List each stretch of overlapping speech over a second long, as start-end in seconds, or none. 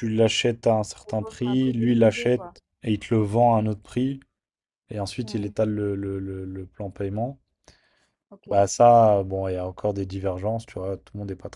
1.0-2.5